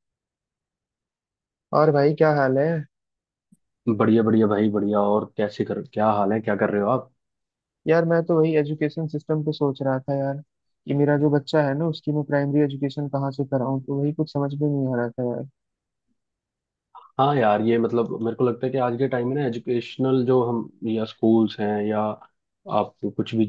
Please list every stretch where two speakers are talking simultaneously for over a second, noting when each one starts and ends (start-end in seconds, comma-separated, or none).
none